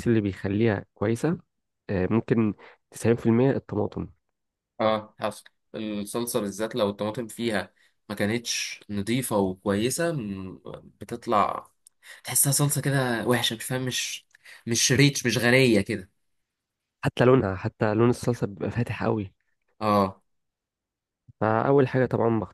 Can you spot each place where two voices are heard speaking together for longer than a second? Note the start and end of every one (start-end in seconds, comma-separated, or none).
none